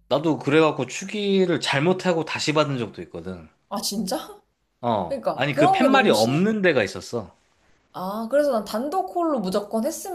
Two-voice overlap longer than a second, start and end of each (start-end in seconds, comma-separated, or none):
5.1-6.4